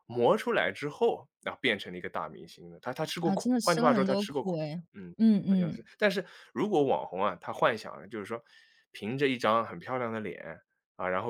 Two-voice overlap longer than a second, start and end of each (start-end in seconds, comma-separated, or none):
3.2-4.8